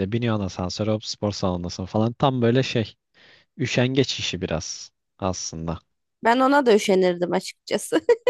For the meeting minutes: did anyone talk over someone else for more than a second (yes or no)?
no